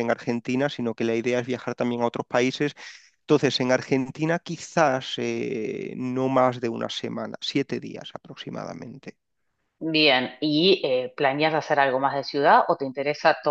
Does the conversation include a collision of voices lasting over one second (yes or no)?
no